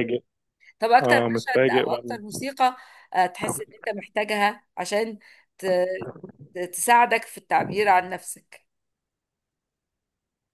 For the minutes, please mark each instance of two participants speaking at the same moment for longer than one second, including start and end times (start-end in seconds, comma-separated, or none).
1.0-2.4